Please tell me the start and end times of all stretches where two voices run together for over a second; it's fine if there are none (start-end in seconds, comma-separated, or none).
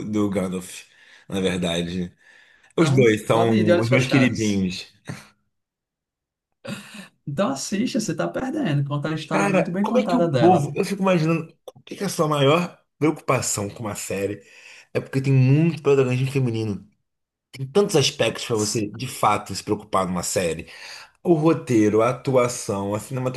2.8-4.7, 9.3-10.7